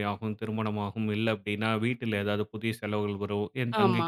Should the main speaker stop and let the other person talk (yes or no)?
no